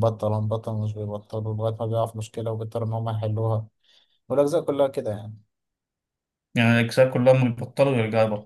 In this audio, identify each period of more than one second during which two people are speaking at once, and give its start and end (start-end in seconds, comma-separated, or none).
none